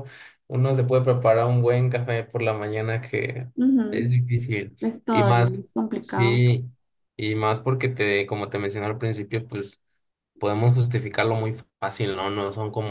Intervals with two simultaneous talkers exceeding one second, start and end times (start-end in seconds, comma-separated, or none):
4.8-6.4